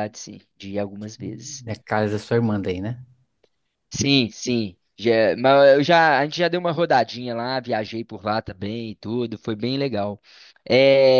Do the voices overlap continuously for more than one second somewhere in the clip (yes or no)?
no